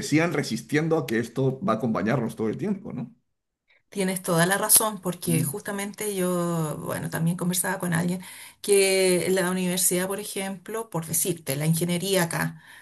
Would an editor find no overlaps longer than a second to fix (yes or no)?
yes